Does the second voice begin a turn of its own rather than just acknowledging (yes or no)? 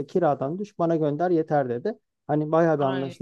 no